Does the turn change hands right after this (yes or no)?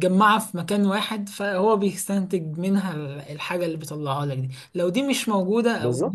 no